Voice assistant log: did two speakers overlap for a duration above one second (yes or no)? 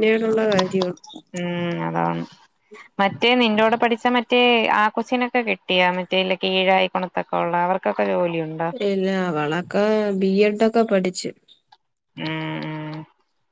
no